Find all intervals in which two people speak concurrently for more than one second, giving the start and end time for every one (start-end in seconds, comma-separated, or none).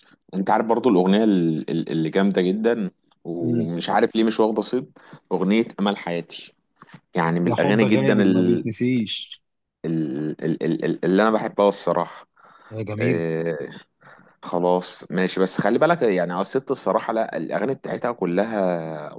7.5-8.7